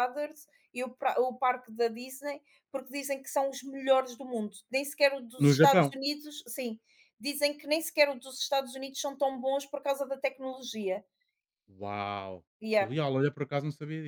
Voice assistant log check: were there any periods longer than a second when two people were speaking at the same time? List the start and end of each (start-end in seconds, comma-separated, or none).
none